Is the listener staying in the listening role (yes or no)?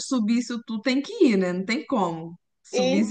no